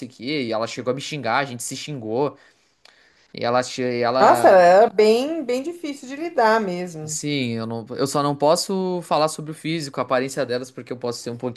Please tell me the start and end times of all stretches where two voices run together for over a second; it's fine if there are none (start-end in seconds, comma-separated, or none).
none